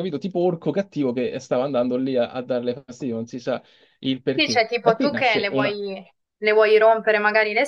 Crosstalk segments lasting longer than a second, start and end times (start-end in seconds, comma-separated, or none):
4.3-5.8